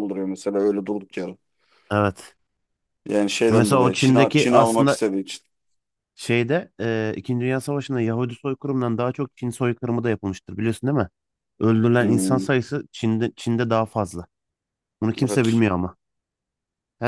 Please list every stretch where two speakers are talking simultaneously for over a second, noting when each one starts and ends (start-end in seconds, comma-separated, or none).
3.5-5.0